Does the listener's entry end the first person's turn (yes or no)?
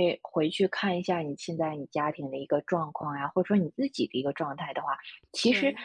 no